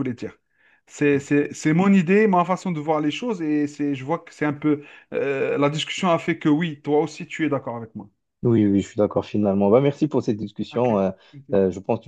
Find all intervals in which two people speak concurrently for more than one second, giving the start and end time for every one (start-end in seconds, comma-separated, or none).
none